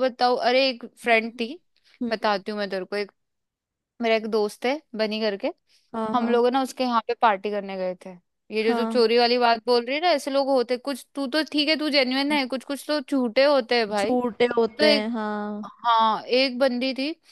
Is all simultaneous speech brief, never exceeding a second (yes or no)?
yes